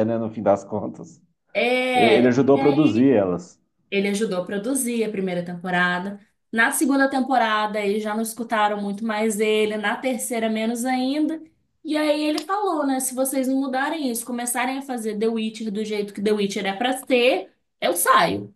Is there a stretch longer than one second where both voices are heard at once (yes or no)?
yes